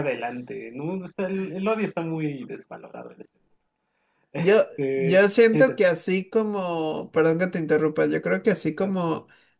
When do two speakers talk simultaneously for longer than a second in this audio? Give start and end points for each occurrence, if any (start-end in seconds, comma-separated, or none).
4.3-5.9